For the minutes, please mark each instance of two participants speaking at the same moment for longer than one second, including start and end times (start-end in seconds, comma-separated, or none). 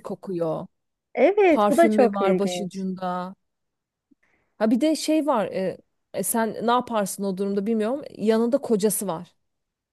1.5-2.9